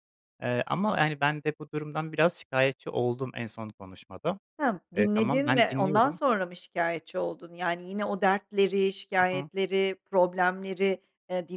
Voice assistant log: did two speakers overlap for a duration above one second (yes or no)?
yes